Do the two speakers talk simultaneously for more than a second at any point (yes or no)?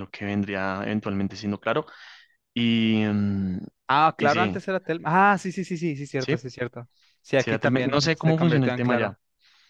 yes